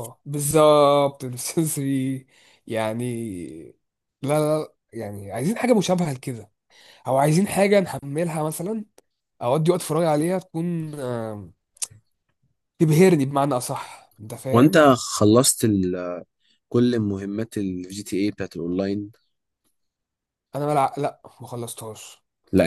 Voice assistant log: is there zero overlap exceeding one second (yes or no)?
yes